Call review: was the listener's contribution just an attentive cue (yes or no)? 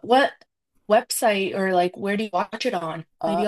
no